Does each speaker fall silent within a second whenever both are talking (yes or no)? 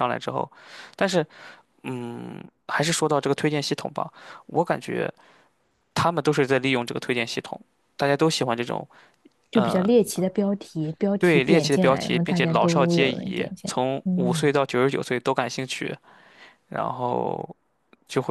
no